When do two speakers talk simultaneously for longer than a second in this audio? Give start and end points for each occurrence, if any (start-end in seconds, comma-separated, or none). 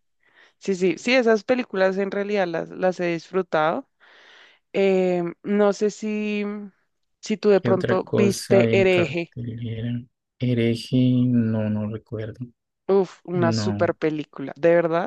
7.6-9.3